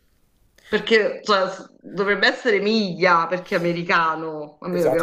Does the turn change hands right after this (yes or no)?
yes